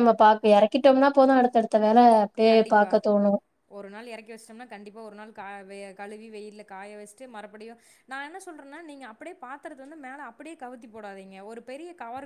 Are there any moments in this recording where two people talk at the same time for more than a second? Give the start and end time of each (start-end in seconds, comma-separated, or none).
none